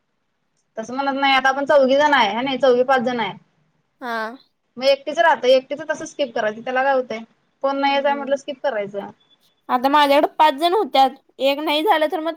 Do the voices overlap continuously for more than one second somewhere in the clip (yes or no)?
no